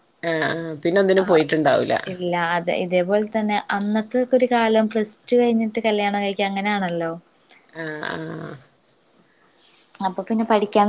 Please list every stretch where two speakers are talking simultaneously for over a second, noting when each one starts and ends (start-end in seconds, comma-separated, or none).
none